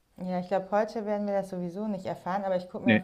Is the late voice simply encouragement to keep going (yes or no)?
yes